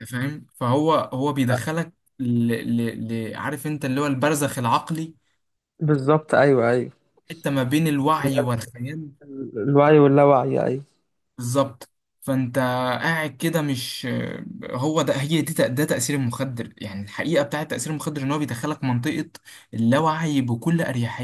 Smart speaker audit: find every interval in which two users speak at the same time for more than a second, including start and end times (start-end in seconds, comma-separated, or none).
none